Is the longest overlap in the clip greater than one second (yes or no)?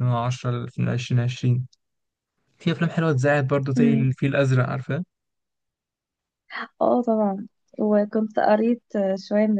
no